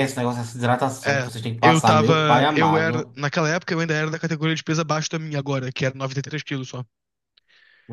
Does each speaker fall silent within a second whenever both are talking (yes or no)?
no